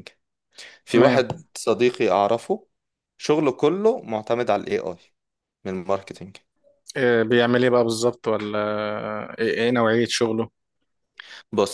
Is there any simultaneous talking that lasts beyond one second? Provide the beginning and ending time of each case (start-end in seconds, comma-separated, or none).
none